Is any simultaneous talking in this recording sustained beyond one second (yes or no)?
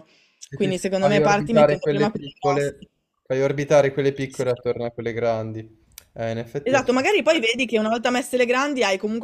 yes